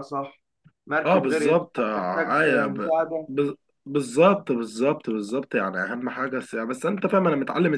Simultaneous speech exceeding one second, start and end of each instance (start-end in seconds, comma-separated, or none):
1.1-3.3